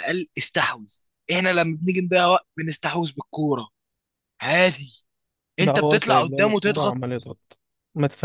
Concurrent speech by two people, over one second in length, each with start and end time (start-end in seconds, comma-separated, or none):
5.6-7.0